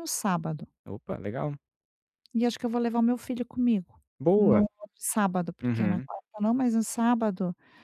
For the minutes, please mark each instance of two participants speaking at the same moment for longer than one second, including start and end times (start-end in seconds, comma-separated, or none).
none